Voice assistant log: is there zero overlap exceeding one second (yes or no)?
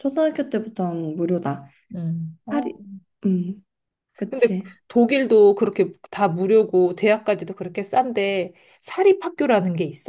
yes